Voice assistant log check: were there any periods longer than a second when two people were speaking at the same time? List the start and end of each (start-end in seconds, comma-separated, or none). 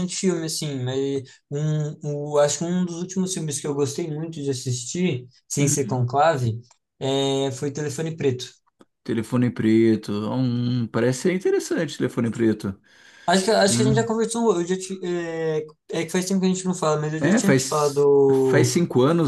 17.2-18.7